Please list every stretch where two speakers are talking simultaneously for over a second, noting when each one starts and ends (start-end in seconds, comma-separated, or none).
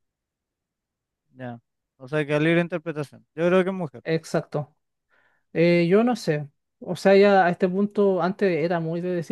none